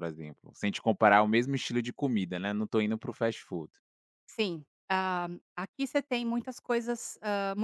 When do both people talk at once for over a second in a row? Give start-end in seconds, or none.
none